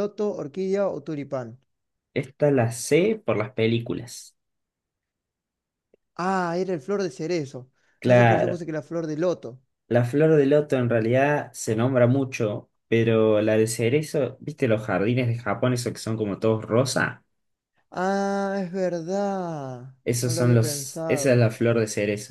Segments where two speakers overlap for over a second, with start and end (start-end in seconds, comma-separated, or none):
20.0-21.5